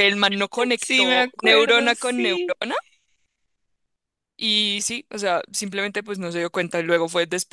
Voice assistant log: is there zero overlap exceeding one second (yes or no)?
no